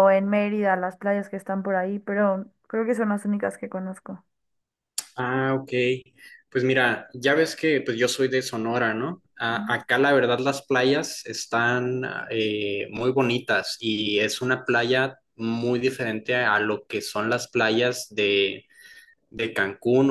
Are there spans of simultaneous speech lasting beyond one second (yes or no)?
no